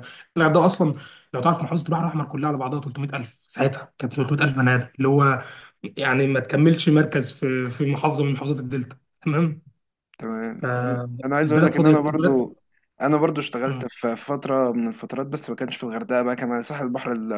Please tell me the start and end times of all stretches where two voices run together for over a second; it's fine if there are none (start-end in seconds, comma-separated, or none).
10.6-12.4